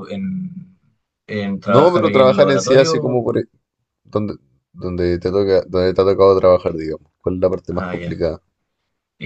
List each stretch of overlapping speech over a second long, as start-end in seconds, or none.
1.6-3.2